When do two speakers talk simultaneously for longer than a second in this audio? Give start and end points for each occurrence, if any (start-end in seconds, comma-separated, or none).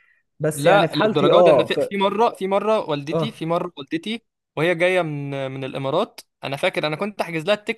0.5-1.8